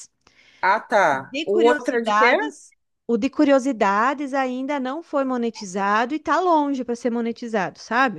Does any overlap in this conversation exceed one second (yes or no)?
yes